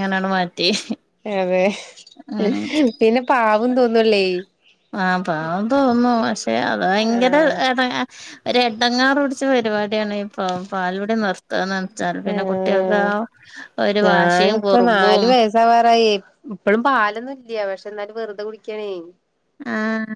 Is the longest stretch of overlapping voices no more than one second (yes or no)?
no